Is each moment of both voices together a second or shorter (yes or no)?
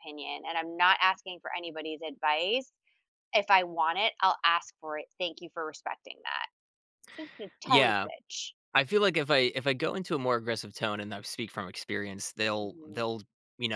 yes